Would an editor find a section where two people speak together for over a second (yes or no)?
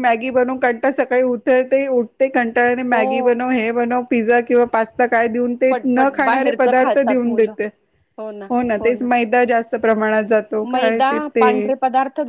yes